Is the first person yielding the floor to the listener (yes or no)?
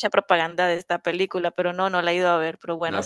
yes